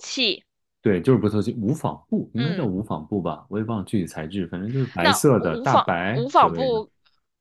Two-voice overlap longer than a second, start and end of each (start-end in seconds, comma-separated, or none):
5.0-6.8